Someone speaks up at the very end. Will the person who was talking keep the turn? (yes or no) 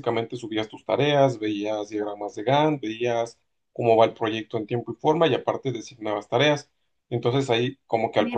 no